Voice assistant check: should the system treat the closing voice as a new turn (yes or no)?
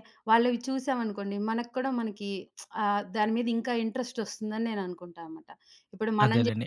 yes